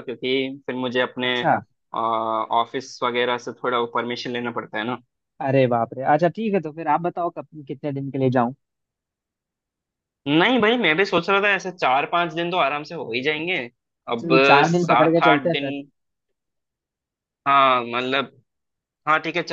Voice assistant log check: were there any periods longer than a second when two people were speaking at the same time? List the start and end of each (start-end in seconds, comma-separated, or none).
14.1-15.7